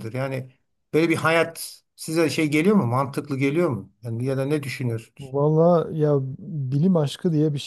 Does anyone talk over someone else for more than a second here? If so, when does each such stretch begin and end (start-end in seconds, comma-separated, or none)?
none